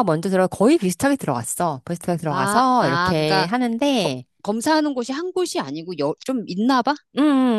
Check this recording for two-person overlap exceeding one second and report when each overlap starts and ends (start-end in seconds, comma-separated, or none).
2.3-3.5